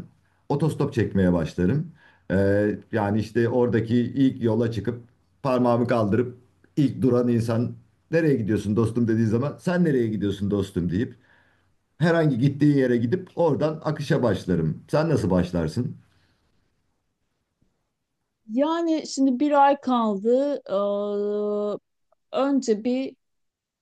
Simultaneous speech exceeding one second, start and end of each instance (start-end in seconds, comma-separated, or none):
none